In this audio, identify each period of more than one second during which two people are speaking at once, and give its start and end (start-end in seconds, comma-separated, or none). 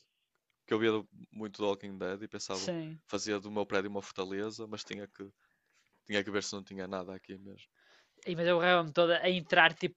none